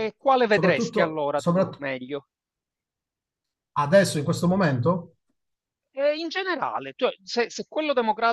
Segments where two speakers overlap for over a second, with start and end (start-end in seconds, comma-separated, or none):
0.5-1.8